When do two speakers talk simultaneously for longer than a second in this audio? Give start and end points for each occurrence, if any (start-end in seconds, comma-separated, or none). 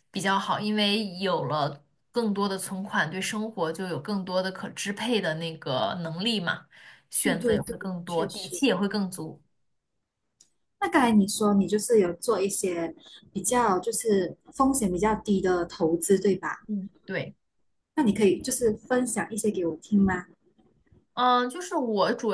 7.2-8.6